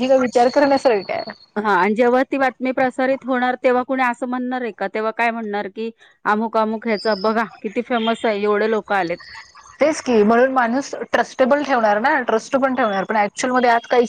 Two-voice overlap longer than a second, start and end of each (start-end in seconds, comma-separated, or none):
none